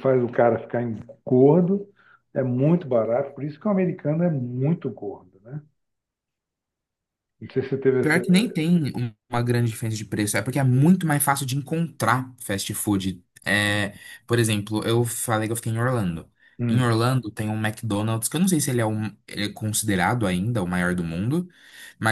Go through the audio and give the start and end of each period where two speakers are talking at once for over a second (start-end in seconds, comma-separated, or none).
none